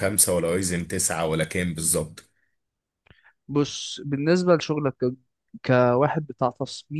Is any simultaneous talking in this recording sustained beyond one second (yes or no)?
no